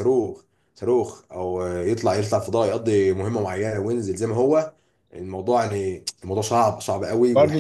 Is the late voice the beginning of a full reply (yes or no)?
yes